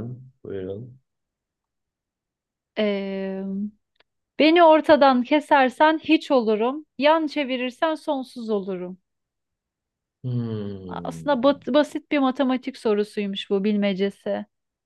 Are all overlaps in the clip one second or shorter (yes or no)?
yes